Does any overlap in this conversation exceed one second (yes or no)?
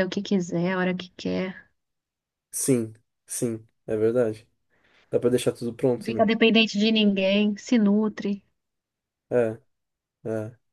no